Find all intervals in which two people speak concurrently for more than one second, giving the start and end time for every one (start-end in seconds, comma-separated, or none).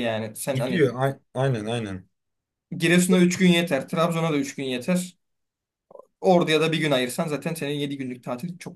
none